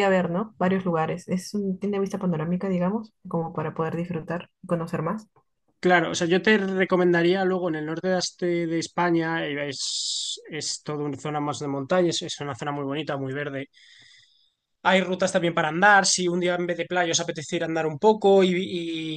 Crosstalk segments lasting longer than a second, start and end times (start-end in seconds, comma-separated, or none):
none